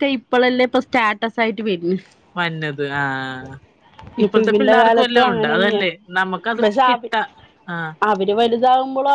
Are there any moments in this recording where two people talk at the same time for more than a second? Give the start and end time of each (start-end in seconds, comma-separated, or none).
4.2-5.8